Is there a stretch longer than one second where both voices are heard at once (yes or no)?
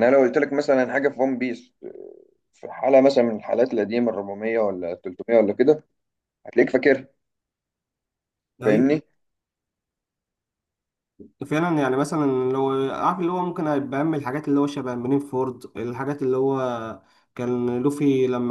no